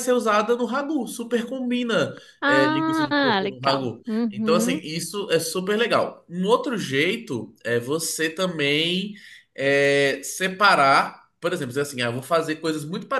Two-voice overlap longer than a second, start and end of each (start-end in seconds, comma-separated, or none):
2.4-4.8